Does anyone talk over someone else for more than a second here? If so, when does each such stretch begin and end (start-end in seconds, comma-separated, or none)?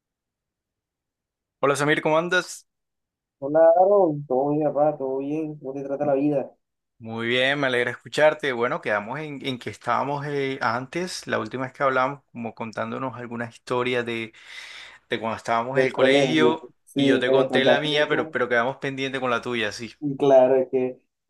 15.7-18.3